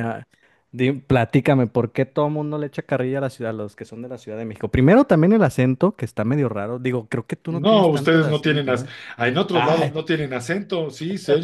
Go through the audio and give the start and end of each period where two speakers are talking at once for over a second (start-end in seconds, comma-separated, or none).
7.5-8.9